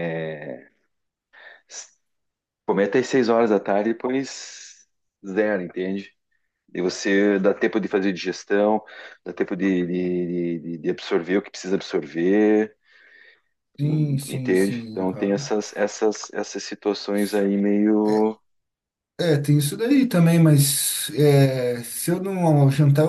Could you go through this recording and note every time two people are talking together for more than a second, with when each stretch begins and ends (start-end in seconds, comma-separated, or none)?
13.8-15.5